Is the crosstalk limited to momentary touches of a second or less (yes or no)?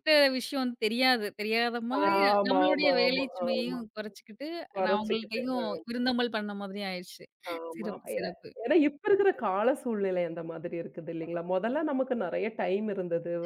no